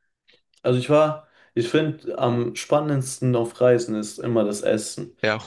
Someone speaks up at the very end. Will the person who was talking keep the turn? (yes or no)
no